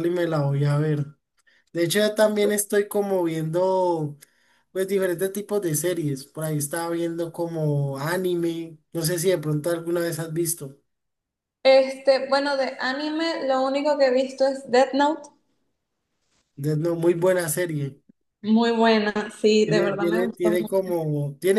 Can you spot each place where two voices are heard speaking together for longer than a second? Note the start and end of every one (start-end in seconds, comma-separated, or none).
19.6-21.0